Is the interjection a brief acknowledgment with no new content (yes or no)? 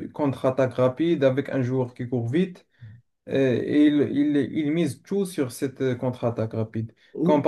yes